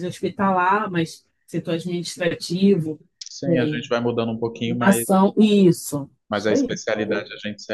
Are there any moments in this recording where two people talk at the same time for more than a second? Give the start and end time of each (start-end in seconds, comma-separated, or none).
none